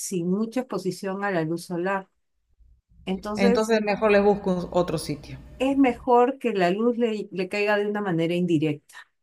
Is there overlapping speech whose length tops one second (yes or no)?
no